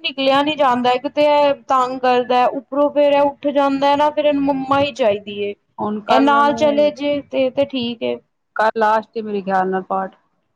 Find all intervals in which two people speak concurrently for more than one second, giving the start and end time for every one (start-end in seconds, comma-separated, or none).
none